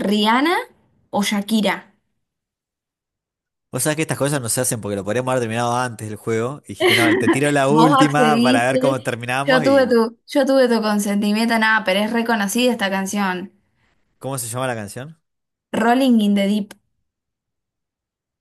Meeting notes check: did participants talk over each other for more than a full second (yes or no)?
yes